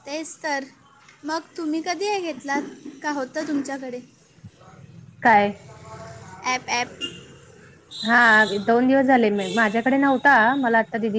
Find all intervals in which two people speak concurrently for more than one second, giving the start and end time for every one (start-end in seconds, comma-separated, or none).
none